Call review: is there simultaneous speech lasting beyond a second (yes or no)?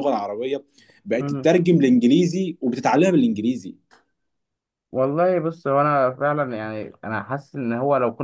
no